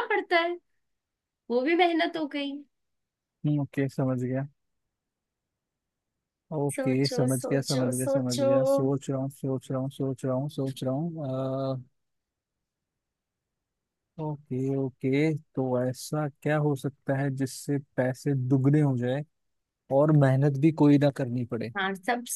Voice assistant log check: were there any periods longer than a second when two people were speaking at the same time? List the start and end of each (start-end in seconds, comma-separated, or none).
6.7-8.5